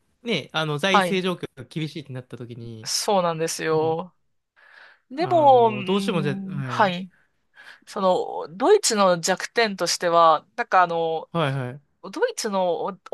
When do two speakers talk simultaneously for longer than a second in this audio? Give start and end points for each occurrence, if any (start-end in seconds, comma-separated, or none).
5.1-6.9